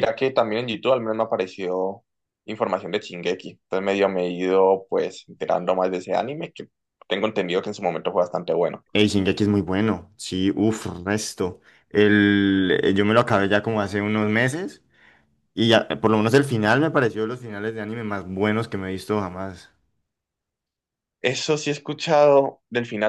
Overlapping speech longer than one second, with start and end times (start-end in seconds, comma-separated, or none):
none